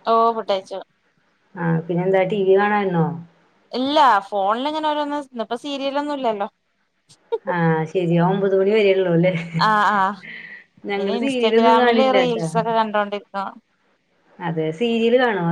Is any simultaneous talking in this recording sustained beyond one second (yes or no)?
yes